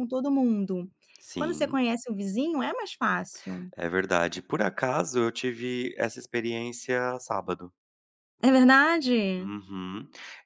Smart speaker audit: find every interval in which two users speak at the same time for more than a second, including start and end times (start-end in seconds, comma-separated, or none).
none